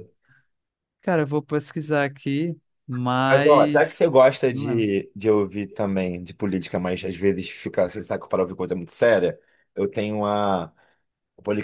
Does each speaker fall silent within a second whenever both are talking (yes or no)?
no